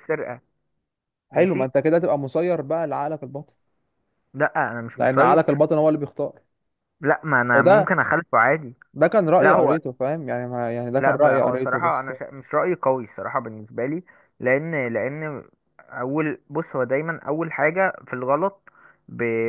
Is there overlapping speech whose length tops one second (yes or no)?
yes